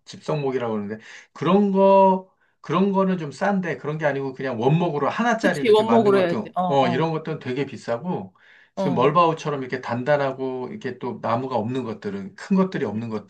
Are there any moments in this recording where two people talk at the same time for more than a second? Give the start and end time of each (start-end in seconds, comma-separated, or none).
5.4-7.1